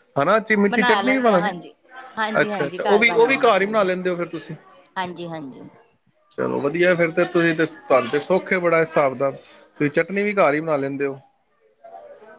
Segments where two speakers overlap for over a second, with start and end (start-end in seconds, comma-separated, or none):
2.4-3.7